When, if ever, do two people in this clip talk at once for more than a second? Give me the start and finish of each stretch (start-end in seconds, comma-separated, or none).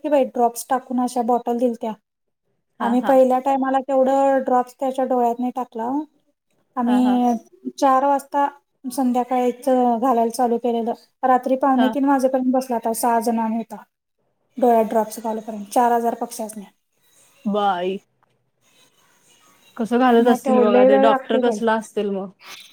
20.3-21.6